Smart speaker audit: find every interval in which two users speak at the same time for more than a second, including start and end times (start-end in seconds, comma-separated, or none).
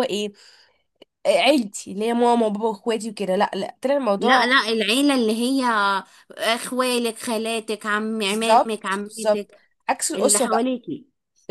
8.2-9.5